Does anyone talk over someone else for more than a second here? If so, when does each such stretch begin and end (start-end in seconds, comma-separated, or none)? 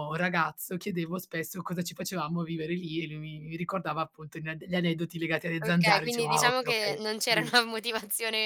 5.6-7.5